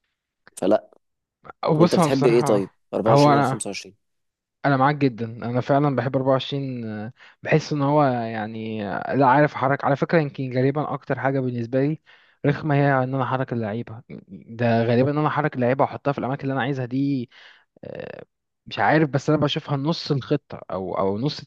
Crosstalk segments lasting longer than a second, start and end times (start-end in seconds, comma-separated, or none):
1.8-3.7